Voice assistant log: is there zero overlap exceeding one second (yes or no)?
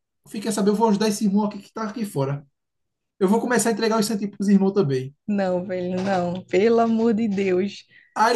yes